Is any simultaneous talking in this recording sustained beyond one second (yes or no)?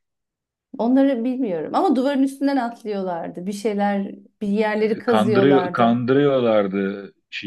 yes